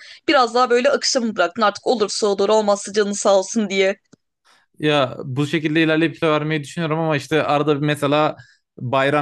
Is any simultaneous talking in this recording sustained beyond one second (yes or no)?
no